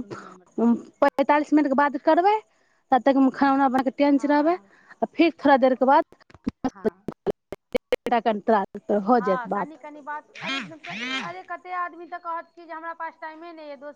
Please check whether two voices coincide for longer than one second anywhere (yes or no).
no